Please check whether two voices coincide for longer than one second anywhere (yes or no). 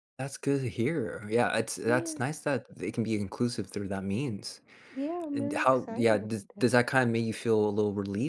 yes